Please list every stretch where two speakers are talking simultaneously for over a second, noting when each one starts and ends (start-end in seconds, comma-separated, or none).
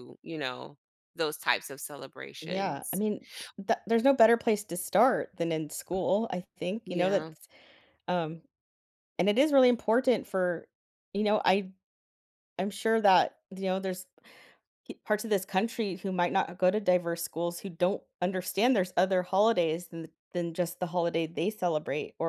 none